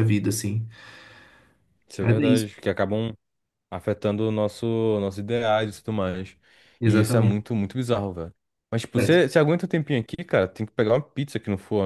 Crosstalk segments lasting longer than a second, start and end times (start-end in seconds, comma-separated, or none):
none